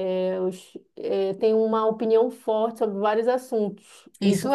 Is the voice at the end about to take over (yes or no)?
no